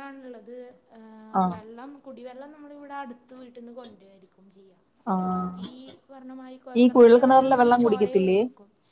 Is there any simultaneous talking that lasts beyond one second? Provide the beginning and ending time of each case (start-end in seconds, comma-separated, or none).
6.8-8.4